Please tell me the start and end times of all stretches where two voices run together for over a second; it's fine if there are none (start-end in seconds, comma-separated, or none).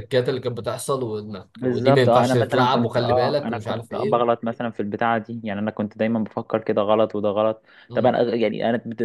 1.6-4.2